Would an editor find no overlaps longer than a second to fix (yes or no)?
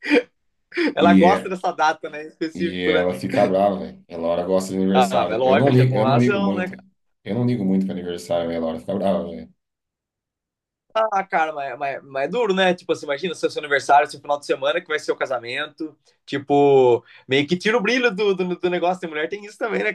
no